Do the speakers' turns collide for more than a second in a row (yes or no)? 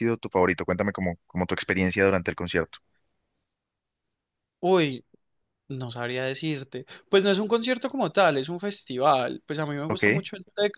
no